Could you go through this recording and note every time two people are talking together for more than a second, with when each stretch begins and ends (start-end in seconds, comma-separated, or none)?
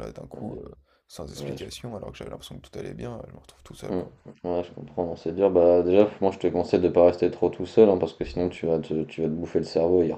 none